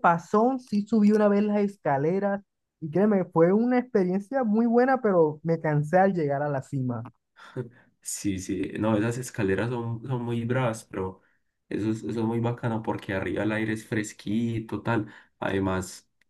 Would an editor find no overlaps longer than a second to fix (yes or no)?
yes